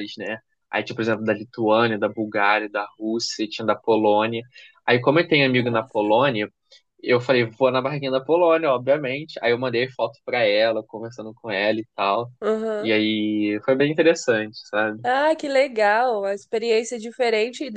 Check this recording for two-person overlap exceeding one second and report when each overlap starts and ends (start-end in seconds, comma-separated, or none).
none